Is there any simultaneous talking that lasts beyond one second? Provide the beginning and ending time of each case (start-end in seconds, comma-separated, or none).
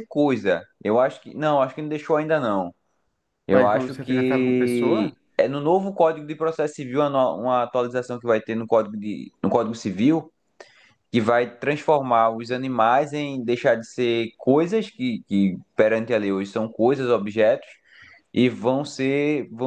3.5-5.1